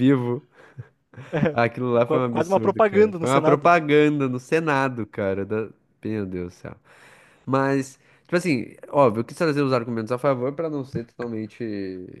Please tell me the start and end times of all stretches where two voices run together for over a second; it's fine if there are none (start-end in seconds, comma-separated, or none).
2.3-3.7